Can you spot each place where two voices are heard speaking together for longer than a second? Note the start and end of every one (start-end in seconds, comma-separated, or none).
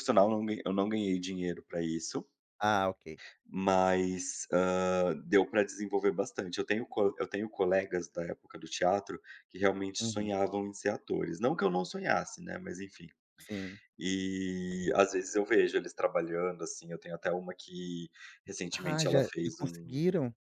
18.7-20.0